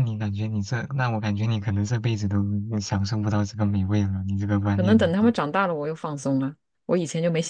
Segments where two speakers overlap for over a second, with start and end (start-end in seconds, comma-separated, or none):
none